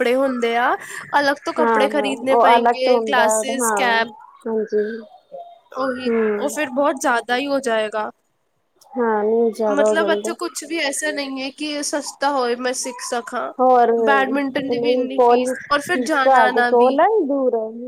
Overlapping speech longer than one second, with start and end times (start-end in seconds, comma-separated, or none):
1.6-3.8, 14.1-17.0